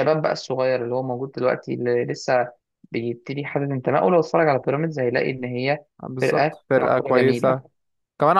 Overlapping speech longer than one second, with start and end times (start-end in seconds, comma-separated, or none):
6.2-7.6